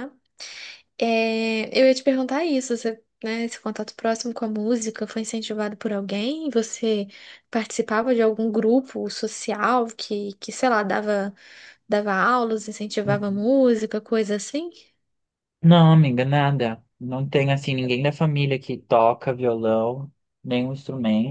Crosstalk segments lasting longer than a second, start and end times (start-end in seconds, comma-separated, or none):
none